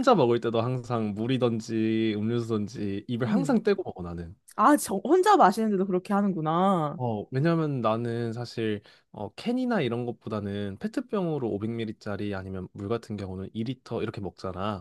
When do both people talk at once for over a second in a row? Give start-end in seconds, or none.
none